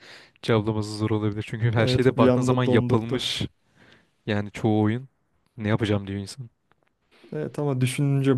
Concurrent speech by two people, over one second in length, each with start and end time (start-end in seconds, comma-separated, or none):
1.8-3.3